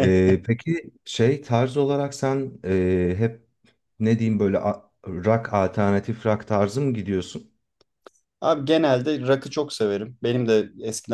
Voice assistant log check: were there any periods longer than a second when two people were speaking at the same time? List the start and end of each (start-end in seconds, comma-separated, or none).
none